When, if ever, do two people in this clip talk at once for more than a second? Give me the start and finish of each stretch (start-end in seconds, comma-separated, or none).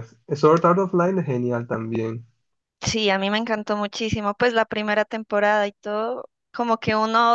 none